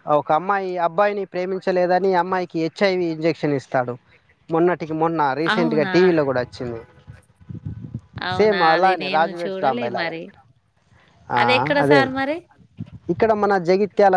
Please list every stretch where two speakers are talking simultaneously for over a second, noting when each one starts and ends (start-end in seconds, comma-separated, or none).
8.4-10.1